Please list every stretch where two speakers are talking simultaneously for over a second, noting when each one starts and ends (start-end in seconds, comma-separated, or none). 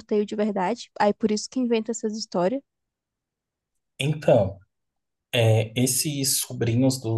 none